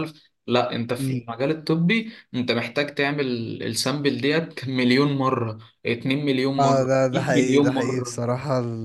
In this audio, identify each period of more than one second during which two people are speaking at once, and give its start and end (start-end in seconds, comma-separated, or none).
6.6-8.2